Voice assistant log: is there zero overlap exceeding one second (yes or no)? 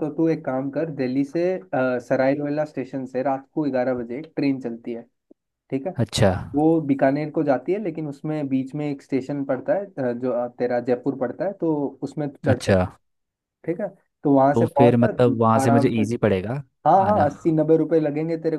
no